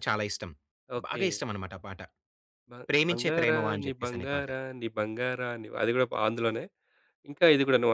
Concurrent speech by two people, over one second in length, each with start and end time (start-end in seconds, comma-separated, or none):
3.1-4.5